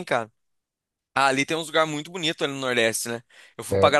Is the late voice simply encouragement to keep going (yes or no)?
yes